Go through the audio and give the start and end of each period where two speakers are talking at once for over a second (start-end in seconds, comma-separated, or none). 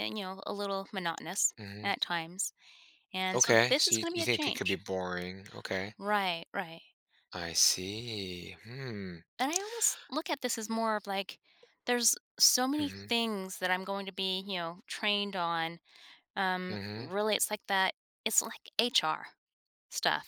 3.3-4.8